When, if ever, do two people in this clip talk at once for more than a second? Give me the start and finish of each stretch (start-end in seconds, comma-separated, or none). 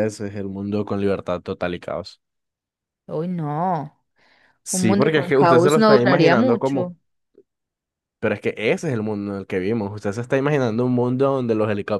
4.7-6.9